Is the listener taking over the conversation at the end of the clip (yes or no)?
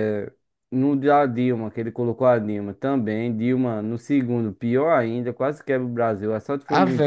no